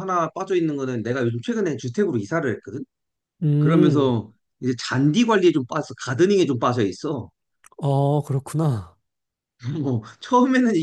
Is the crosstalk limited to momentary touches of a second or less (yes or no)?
yes